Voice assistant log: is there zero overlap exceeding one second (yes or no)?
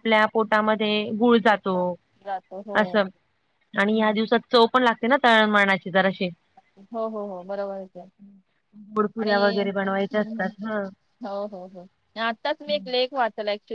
yes